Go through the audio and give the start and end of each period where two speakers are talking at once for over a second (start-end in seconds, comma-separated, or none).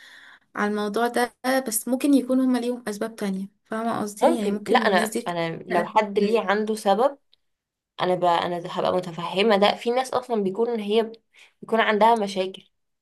4.2-6.0